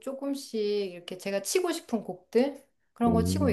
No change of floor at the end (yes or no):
yes